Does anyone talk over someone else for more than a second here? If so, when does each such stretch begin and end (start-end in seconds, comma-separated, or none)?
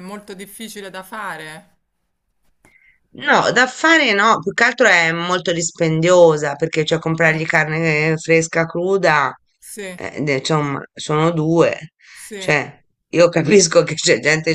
none